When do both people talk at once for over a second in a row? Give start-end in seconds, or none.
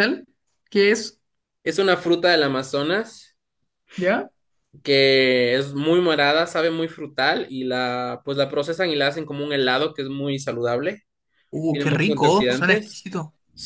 11.6-13.1